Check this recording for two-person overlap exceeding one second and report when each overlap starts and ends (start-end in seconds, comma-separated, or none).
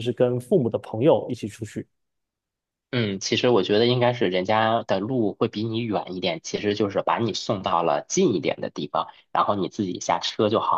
none